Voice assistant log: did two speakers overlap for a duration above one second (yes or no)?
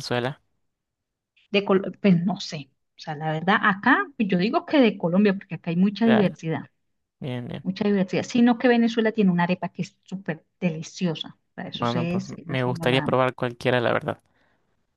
yes